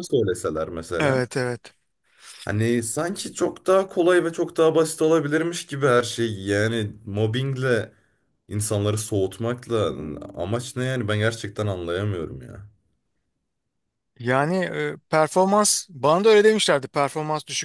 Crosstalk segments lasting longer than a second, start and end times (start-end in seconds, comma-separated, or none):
none